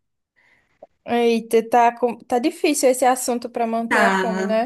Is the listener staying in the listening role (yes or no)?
no